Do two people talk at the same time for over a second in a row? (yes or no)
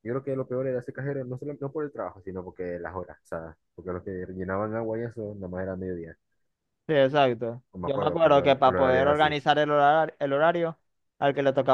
yes